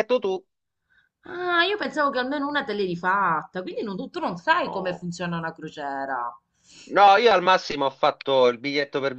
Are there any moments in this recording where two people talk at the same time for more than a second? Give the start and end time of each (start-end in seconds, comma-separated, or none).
none